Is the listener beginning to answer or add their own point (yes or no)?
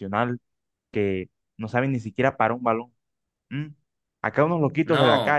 no